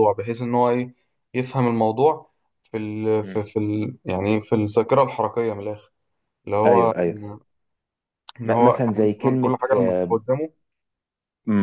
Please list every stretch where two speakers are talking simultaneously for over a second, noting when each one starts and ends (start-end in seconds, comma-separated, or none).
8.4-10.2